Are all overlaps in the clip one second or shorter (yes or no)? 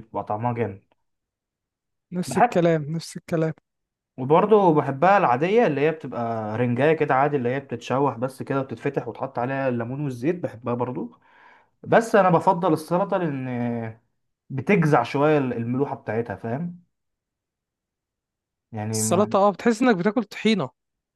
yes